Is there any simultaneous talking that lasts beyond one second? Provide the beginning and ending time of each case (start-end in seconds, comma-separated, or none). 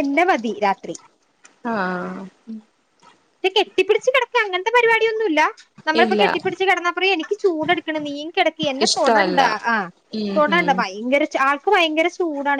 none